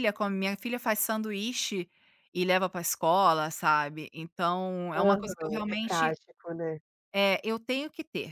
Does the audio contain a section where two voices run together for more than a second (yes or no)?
yes